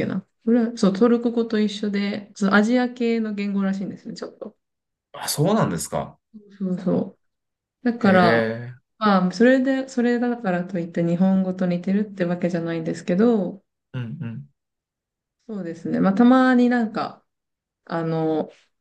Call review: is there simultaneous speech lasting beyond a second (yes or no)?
no